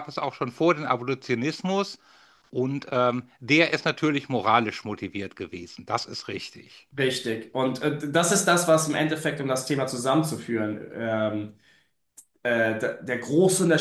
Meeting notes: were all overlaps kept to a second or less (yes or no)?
yes